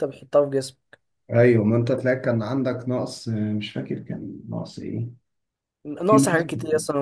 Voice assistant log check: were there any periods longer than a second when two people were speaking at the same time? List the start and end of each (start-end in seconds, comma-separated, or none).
none